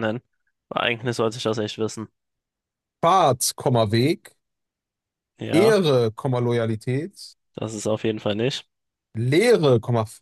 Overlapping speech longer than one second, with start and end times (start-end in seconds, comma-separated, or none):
none